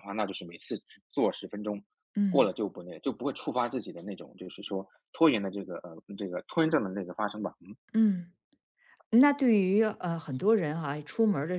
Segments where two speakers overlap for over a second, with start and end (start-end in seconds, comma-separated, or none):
none